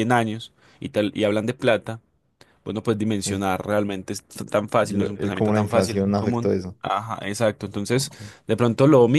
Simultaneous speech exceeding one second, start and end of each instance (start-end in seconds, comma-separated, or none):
4.9-6.8